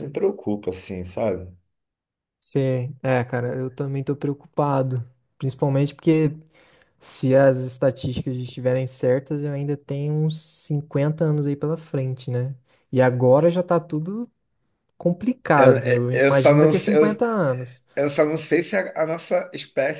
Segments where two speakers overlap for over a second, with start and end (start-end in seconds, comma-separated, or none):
15.6-16.9